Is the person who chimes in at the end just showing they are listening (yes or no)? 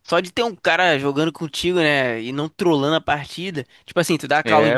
yes